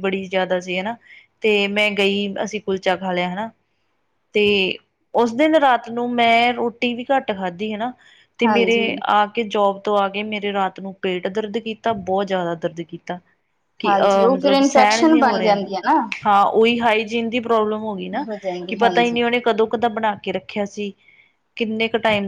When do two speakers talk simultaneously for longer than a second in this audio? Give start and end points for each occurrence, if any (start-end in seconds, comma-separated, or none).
13.8-15.6